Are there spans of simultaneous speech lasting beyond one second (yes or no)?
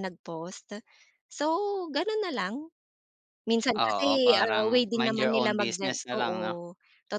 yes